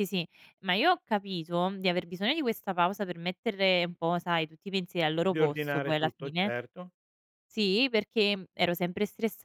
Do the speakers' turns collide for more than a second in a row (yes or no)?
yes